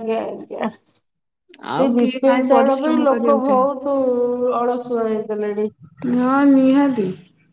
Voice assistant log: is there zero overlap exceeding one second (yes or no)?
no